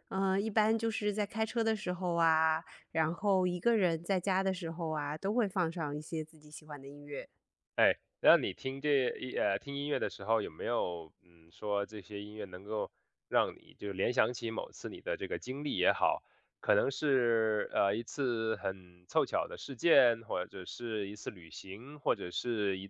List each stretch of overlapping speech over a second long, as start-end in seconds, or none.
none